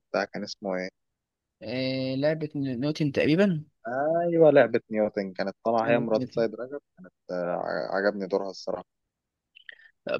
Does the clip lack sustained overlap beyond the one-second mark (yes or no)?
yes